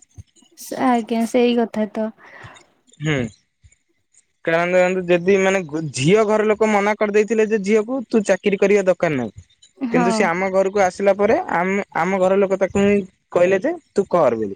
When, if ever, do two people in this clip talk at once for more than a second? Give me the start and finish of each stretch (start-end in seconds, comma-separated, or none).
none